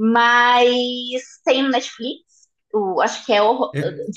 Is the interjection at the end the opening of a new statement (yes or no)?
no